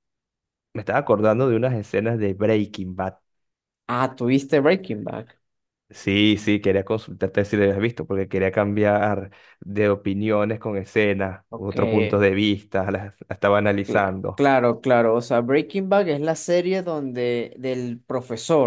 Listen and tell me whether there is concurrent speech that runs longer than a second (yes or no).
no